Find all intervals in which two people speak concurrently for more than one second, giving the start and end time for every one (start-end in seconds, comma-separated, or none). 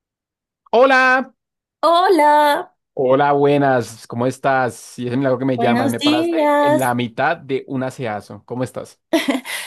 5.5-6.9